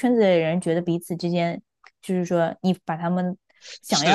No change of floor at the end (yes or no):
no